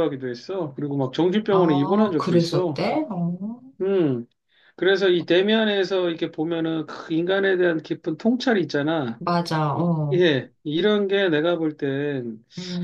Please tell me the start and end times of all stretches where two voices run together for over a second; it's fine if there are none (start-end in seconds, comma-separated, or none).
1.5-2.8